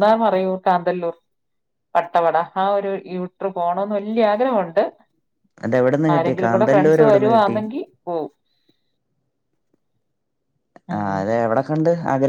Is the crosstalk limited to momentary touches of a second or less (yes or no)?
no